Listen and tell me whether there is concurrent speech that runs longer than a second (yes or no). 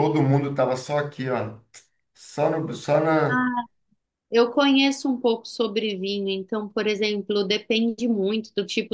no